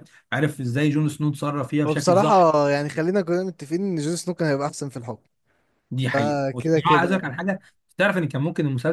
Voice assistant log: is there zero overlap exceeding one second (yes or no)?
no